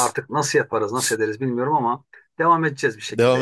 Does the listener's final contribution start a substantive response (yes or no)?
yes